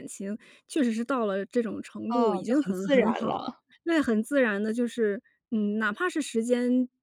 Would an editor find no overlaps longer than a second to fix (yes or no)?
no